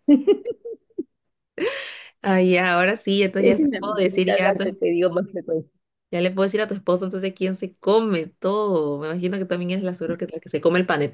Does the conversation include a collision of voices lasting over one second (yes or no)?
yes